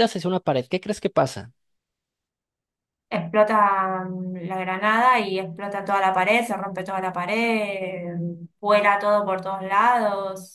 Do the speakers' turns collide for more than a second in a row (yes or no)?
no